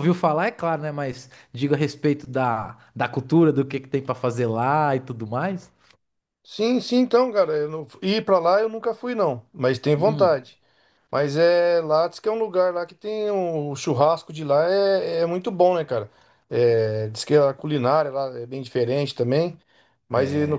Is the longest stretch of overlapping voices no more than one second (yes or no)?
yes